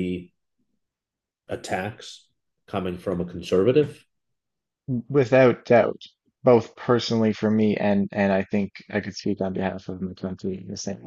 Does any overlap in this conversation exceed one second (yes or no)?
no